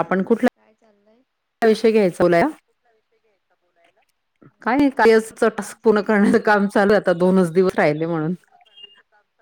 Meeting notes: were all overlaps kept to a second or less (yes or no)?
yes